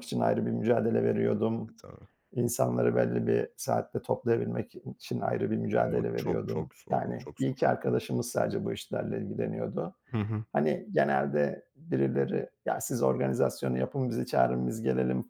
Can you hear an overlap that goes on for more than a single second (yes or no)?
yes